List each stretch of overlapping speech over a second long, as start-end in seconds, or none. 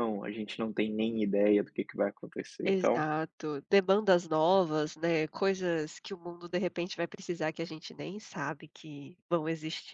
none